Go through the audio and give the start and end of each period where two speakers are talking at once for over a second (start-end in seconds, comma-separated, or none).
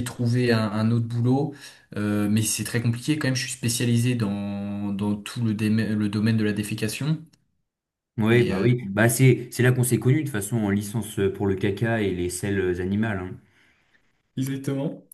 none